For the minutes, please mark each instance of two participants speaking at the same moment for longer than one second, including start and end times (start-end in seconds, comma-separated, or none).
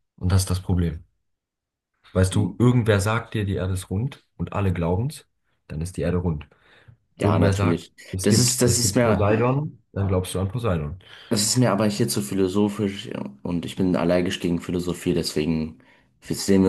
7.2-9.3